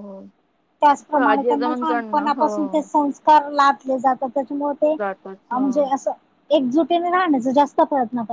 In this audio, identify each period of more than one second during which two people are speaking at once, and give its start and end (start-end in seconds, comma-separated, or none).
1.0-2.7